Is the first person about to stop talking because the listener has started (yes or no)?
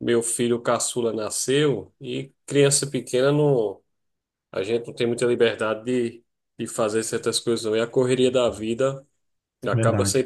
no